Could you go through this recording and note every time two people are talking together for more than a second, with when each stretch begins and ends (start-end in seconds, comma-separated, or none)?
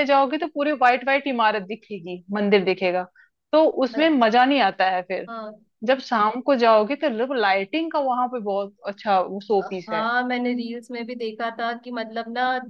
none